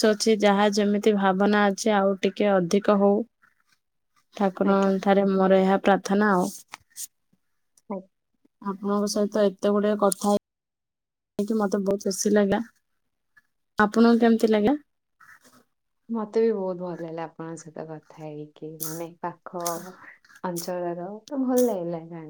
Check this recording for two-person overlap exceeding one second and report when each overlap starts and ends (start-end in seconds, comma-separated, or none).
none